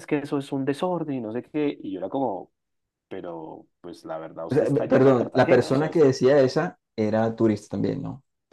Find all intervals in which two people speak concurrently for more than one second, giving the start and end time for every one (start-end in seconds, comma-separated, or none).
4.5-6.0